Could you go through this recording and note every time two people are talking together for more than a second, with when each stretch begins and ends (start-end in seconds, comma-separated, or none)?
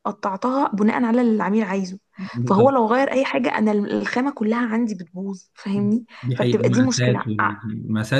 6.2-7.6